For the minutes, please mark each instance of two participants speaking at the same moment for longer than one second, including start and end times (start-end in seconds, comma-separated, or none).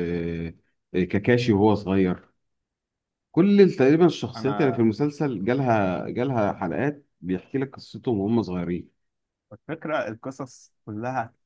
none